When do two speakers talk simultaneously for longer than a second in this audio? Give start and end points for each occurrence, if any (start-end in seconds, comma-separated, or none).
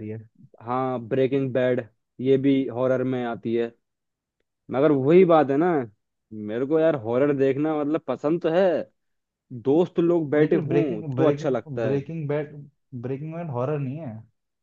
10.4-12.0